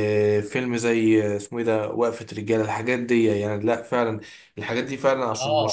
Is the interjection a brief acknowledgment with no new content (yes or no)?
yes